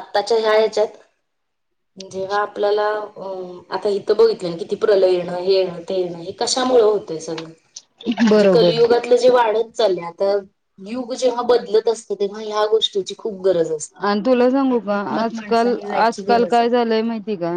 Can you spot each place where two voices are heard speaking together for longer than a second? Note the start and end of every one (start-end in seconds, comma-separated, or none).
14.7-16.7